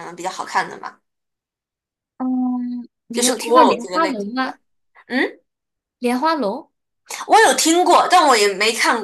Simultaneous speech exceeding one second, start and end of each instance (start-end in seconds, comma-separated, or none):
3.1-4.6